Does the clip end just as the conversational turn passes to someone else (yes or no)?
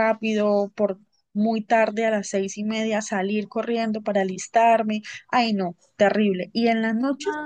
yes